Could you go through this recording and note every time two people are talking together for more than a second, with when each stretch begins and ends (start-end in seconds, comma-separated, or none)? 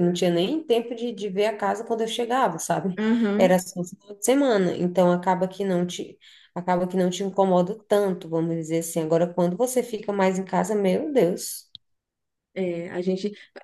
none